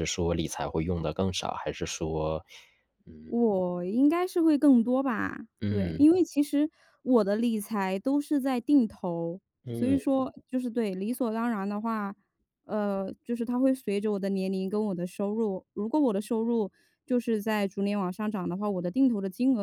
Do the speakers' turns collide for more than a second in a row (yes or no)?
no